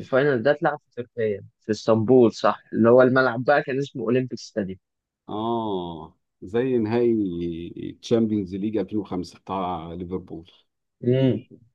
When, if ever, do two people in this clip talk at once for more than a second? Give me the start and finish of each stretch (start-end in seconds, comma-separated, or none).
none